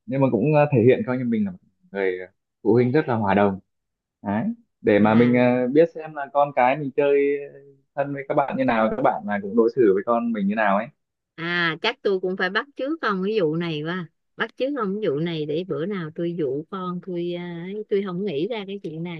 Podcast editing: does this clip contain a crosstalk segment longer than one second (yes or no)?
no